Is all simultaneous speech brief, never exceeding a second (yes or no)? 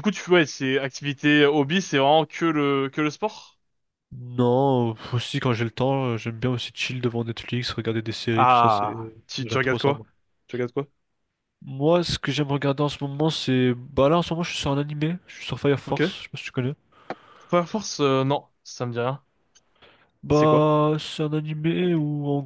no